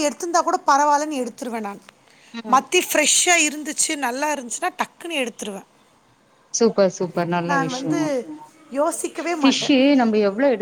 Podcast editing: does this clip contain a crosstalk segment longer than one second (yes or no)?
no